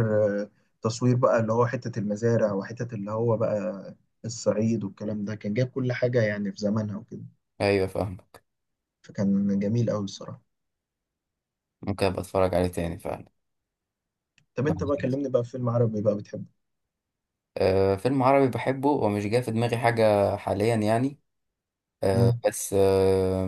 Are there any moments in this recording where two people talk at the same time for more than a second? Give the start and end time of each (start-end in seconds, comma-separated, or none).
none